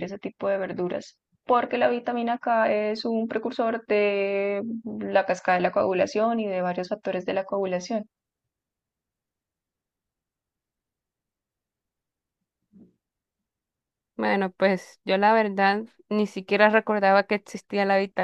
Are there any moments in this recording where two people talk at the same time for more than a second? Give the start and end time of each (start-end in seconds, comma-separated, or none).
none